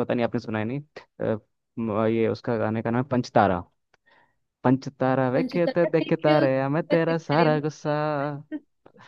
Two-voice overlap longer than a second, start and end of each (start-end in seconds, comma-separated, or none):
5.3-7.7